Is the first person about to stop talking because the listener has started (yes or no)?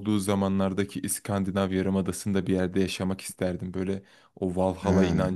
no